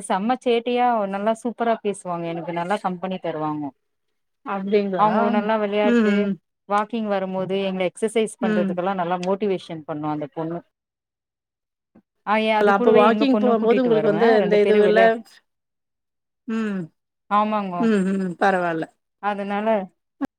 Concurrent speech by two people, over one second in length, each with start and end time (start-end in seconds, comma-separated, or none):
12.6-15.0